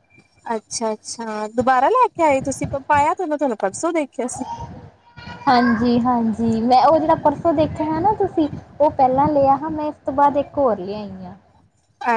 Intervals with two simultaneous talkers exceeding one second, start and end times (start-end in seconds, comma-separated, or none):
none